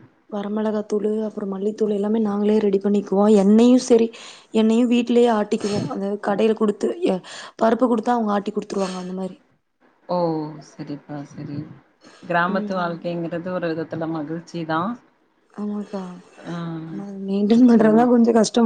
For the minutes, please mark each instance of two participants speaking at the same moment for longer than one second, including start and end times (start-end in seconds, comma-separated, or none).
none